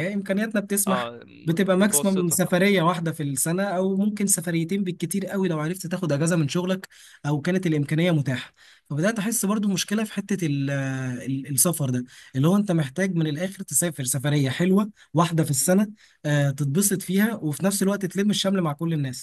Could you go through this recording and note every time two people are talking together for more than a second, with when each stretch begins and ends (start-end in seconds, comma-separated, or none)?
0.9-2.4